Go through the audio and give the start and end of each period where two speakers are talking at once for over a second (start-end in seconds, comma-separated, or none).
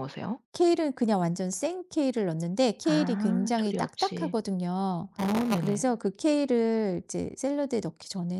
2.8-4.4